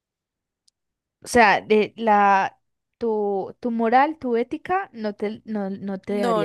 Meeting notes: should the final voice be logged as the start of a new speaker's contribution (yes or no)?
yes